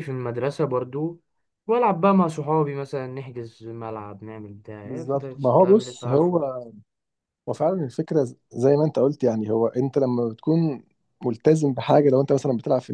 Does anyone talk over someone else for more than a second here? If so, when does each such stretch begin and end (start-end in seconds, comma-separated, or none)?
4.8-6.4